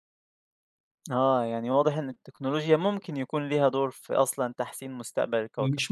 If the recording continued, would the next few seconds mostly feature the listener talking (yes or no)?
yes